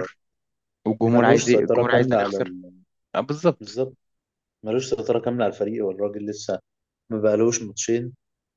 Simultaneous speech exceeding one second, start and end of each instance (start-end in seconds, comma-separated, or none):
1.1-2.5